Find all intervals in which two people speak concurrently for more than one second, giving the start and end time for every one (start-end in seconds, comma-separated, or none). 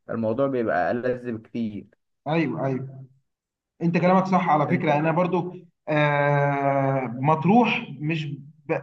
none